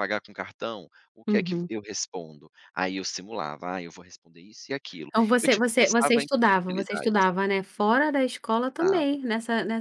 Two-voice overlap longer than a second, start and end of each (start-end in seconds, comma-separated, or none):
5.1-7.3